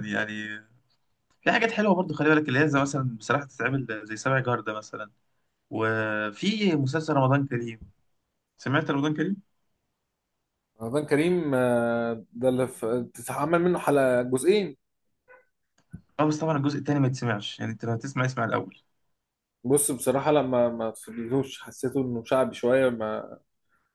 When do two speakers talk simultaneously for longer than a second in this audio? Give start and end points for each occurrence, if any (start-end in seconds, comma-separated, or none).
none